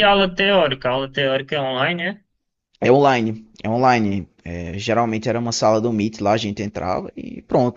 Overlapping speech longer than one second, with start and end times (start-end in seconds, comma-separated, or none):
none